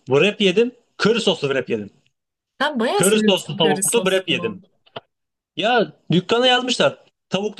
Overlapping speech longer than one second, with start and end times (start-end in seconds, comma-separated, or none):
3.0-4.6